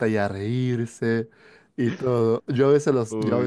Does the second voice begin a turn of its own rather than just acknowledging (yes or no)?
no